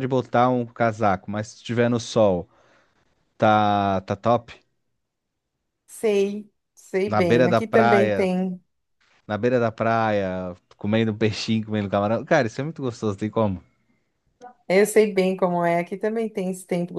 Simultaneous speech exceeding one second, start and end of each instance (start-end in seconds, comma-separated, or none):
7.1-8.3